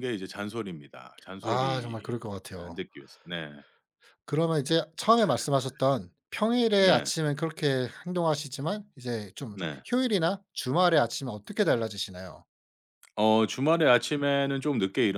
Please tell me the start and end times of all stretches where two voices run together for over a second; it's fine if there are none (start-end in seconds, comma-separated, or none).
1.4-2.8